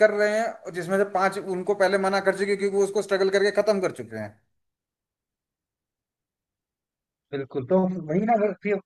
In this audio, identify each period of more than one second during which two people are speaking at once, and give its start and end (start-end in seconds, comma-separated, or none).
none